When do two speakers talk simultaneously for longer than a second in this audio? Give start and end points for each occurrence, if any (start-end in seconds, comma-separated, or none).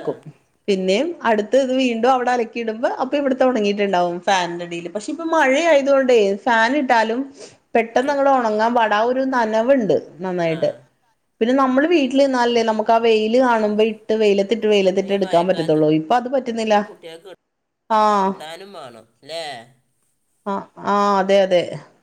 none